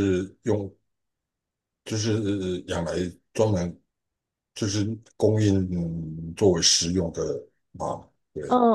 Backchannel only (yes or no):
no